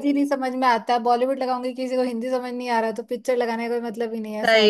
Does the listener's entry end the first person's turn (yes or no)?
yes